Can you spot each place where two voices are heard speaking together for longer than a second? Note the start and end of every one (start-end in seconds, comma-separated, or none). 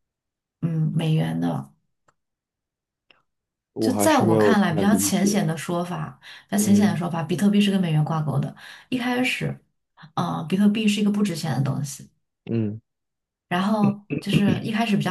3.8-5.4